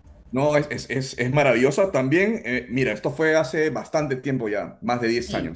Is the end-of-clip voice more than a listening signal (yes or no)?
no